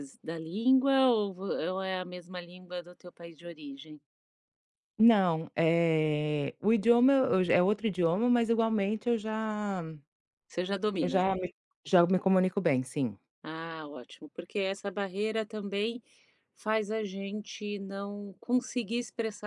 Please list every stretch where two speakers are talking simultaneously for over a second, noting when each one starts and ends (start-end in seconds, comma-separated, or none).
none